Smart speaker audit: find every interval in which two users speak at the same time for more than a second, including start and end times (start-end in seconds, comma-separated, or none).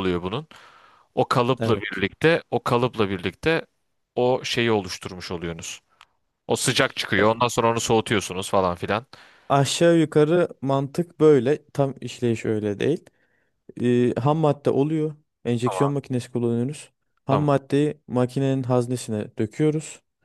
none